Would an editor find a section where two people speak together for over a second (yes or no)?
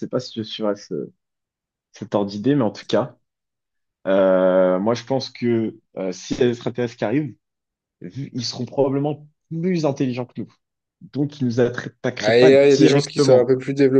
yes